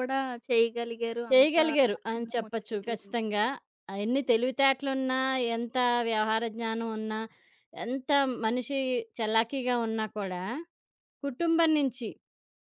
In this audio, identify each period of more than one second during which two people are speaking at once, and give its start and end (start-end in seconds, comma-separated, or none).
1.3-3.1